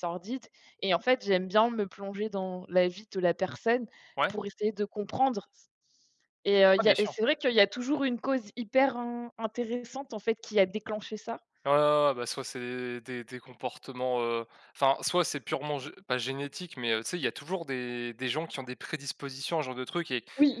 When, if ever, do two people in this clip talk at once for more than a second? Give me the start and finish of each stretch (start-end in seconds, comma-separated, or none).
none